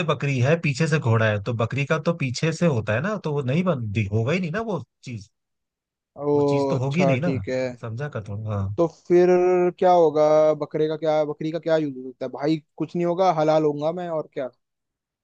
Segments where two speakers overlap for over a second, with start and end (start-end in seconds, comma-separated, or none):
none